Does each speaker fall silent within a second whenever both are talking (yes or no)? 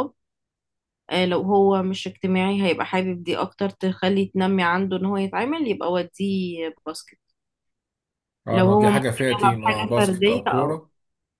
no